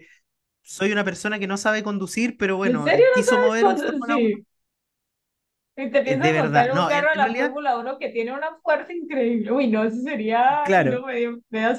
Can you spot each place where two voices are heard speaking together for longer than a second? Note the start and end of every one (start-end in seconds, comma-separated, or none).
2.6-4.2, 6.0-7.5